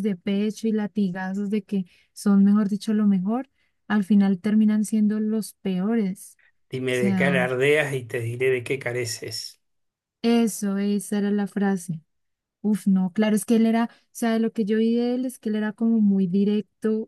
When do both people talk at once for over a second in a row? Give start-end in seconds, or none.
none